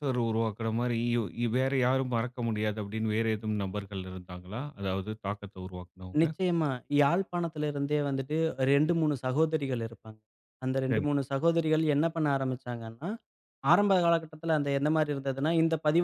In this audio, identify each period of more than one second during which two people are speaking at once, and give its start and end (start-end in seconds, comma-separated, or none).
none